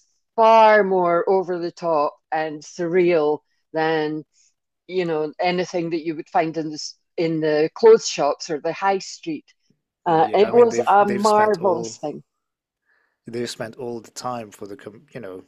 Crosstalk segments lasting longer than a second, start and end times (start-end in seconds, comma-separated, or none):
10.1-12.0